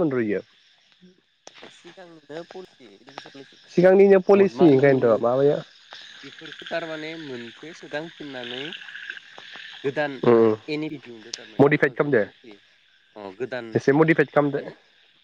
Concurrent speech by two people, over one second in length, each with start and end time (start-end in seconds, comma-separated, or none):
3.7-5.2